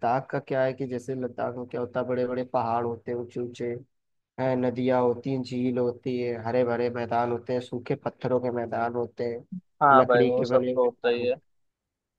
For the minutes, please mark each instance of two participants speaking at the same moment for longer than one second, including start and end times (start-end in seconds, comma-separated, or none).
9.9-11.3